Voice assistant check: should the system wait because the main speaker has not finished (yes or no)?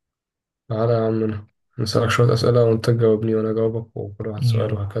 no